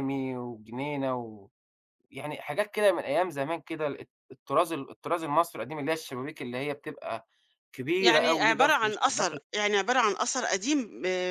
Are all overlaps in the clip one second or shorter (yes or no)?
no